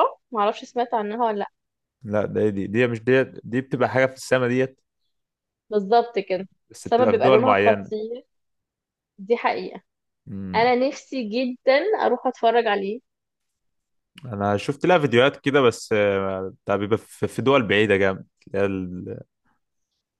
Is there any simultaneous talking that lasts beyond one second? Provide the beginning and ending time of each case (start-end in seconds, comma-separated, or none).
6.7-7.9